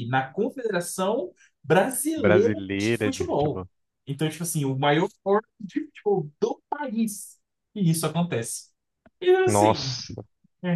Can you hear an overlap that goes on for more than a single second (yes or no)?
yes